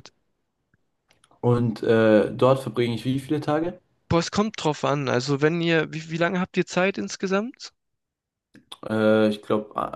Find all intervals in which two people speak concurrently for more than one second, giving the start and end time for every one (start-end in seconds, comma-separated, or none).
none